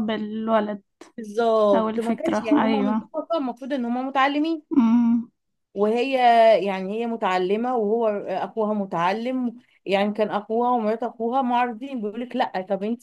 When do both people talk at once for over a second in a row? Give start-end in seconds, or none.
1.7-3.1